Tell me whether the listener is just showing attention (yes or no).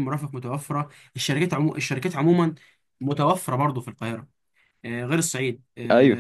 yes